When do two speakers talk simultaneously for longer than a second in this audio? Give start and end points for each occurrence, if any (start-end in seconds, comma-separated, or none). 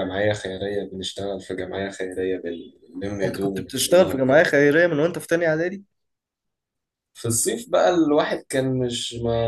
3.2-4.5